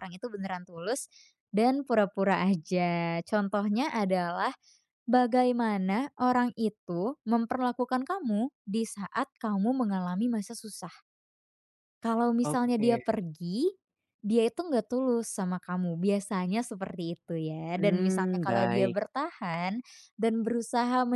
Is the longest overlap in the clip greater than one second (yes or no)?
yes